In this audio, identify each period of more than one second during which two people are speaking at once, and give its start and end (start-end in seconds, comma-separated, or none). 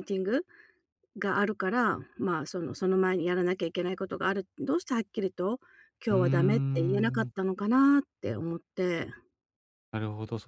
6.1-7.3